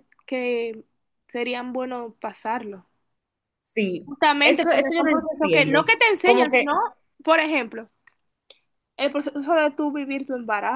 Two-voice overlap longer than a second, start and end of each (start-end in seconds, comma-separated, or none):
4.0-6.7